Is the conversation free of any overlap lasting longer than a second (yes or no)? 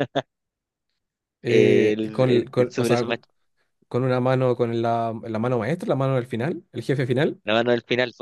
no